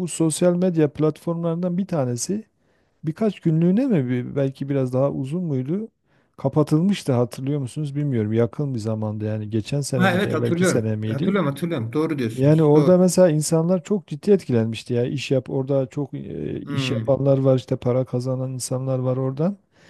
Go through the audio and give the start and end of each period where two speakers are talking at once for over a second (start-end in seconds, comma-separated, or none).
9.9-11.3